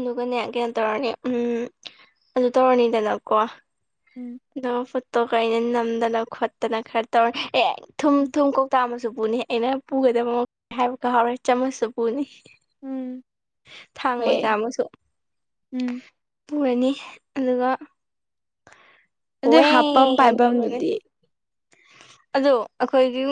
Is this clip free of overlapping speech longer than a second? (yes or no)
no